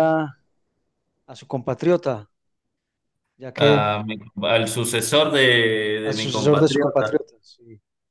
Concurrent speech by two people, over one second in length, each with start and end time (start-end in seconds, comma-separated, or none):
6.0-7.2